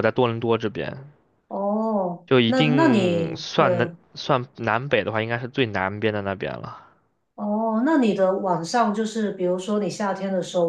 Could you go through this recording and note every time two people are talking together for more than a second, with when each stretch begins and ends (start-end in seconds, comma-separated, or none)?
2.3-3.7